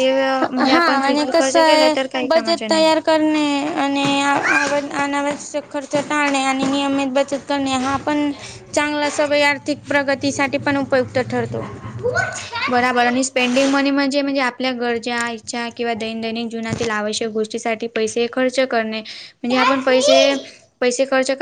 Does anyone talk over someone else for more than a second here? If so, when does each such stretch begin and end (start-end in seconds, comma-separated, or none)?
0.6-2.9